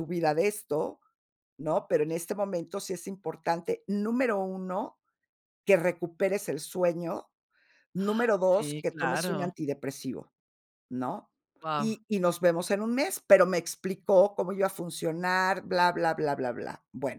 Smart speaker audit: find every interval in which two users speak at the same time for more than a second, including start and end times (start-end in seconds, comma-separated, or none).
8.0-9.5